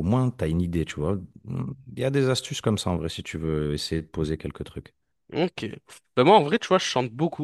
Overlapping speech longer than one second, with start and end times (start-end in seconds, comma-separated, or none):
none